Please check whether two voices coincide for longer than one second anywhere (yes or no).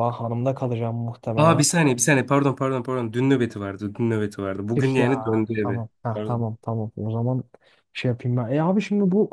yes